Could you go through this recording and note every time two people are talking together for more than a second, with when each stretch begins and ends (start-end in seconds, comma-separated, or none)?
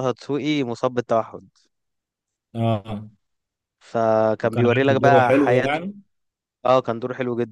4.4-5.9